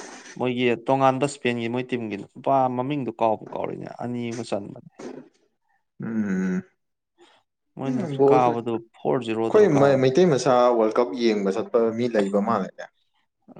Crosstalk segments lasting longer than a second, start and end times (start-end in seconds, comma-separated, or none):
7.9-9.7